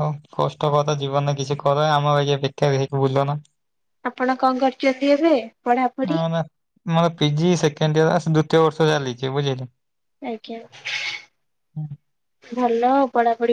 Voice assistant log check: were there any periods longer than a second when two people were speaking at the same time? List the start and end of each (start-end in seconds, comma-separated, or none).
none